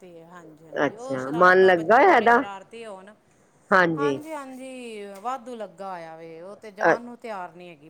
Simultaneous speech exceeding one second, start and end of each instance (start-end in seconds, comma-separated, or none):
0.9-2.3